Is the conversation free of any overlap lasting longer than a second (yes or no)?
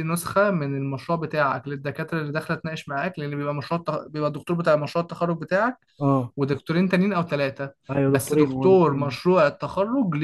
no